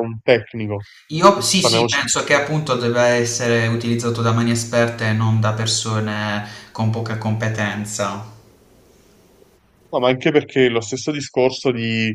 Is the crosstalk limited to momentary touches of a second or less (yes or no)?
yes